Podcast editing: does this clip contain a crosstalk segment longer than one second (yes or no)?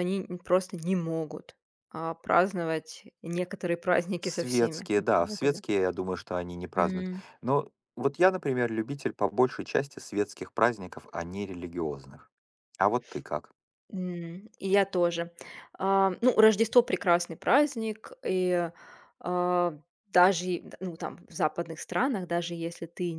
yes